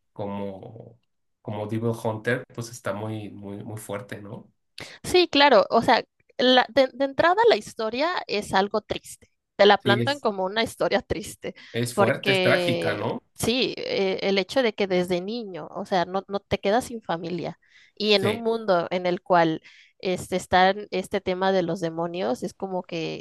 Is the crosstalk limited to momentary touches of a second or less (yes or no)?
no